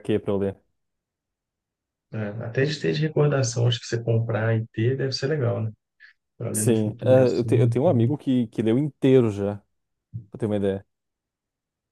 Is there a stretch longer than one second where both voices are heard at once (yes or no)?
yes